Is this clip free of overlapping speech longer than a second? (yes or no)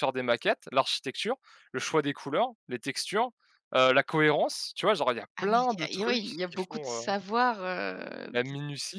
no